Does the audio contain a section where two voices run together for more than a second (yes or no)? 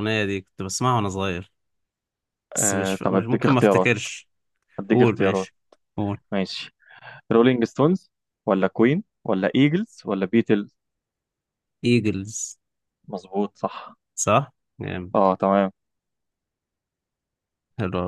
yes